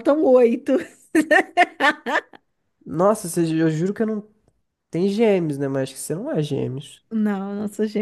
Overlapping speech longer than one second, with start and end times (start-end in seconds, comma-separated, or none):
none